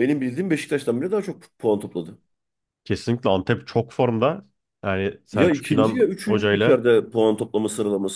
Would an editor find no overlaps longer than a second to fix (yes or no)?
no